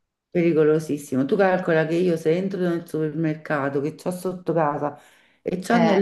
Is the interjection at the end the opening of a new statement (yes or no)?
no